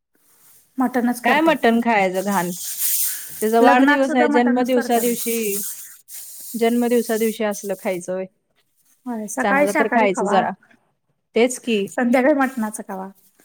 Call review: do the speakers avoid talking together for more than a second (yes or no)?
no